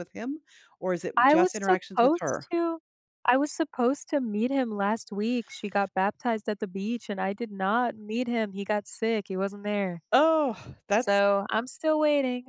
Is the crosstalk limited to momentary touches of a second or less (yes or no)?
no